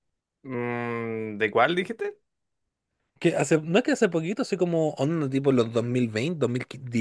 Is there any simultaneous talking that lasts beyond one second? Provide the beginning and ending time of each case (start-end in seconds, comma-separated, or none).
none